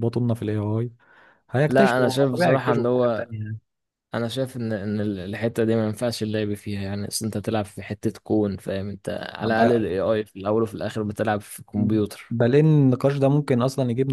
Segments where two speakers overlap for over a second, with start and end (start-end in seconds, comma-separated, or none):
1.7-3.3